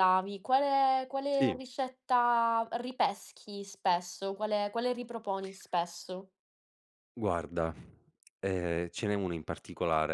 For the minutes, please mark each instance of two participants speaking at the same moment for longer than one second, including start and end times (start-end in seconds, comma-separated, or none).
none